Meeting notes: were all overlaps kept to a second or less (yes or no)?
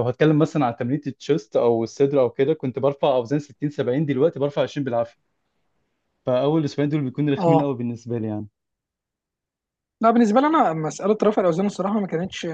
yes